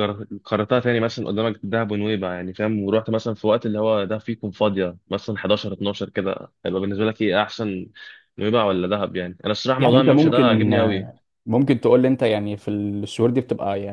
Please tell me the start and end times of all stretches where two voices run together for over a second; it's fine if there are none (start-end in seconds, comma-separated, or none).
9.8-11.1